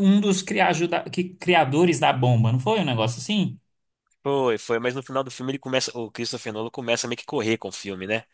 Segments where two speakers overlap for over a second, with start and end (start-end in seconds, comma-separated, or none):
none